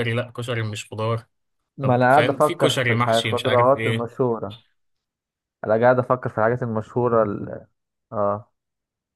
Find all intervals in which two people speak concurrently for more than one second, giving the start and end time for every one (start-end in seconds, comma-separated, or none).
1.8-4.1